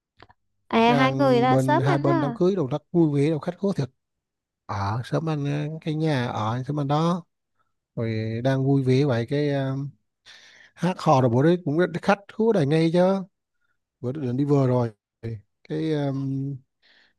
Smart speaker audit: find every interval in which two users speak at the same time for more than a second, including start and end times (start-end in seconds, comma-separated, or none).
0.8-2.4